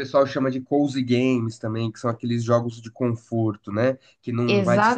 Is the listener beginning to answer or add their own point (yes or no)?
yes